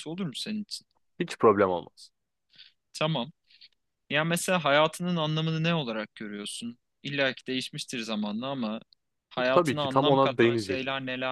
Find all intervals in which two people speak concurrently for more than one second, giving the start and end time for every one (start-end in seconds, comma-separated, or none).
9.5-10.8